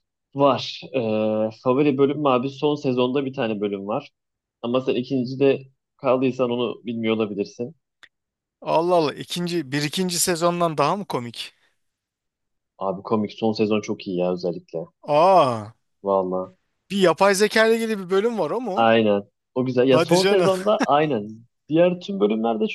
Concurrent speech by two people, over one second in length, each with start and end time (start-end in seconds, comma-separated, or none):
none